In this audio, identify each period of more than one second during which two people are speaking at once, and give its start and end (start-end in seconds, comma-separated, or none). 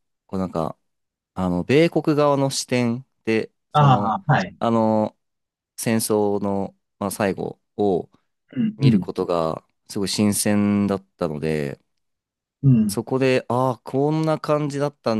none